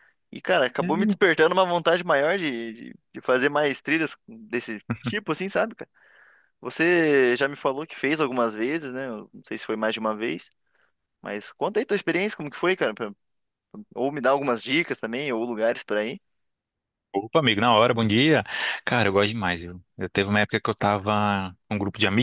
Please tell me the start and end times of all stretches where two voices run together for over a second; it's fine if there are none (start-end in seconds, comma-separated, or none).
none